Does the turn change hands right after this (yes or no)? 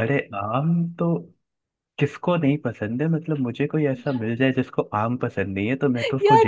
yes